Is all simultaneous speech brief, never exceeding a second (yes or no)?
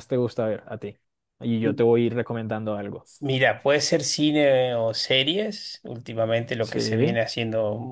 yes